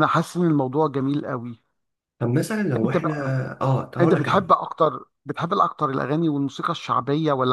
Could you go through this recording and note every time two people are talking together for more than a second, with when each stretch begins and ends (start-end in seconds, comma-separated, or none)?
none